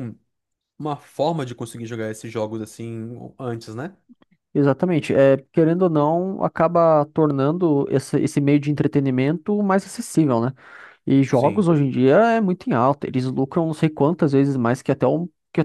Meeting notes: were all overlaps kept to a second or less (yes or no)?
yes